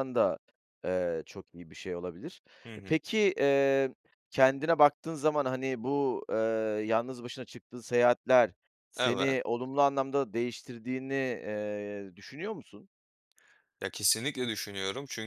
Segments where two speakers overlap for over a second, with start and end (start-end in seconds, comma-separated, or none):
none